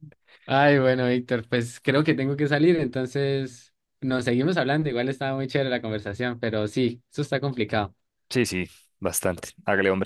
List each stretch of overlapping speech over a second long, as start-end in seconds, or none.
none